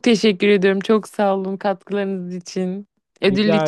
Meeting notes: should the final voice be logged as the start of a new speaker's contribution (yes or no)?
no